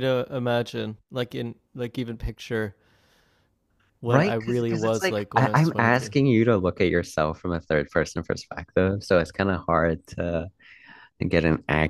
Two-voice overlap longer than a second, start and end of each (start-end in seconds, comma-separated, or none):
4.1-6.1